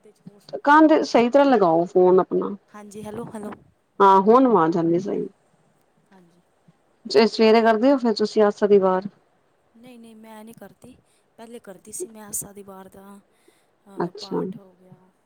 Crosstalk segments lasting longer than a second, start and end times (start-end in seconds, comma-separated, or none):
none